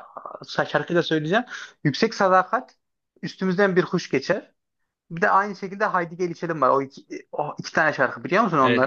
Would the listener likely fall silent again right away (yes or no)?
no